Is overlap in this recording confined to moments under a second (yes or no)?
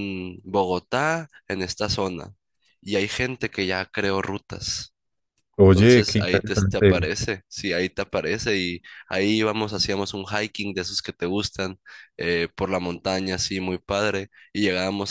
no